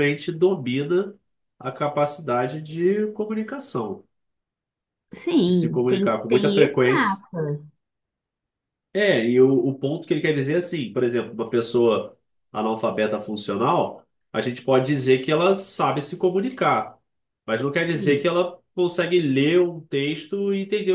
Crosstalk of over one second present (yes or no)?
yes